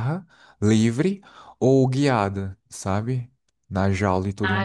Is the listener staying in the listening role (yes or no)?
no